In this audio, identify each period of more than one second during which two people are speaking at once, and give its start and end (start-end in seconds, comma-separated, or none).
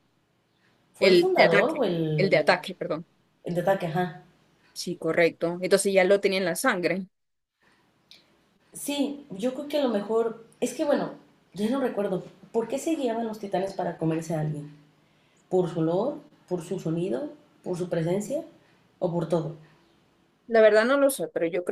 1.0-2.6